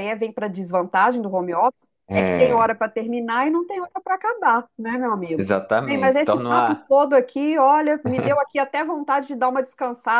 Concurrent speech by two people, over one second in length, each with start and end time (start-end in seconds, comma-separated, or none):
5.3-6.8